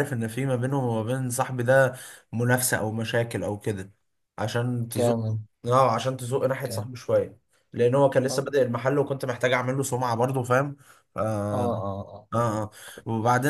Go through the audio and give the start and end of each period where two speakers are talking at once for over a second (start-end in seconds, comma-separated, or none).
none